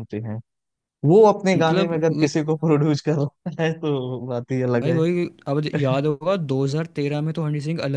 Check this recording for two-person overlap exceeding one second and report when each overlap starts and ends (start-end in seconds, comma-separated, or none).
none